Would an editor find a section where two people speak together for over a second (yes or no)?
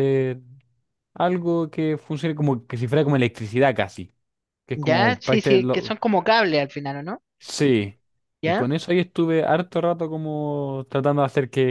yes